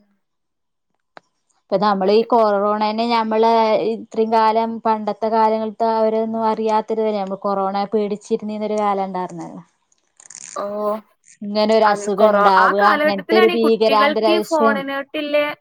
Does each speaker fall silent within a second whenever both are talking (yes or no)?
no